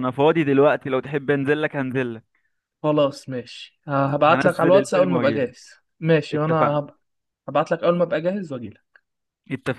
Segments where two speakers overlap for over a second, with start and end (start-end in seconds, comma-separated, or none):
4.2-5.5